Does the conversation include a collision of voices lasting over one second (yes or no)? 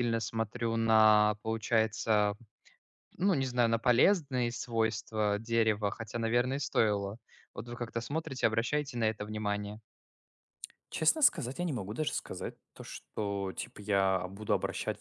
no